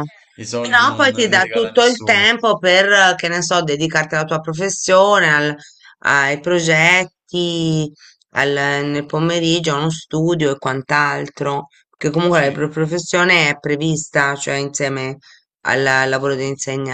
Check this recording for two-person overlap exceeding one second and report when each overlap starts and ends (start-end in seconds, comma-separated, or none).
0.6-2.3